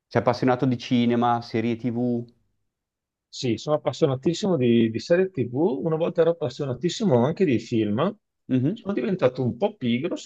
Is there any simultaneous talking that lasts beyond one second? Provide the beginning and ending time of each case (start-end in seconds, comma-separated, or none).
none